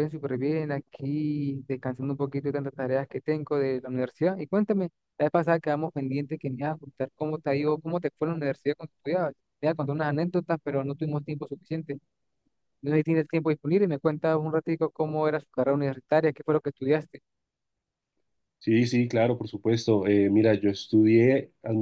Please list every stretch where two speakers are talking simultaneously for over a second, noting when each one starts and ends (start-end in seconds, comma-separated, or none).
none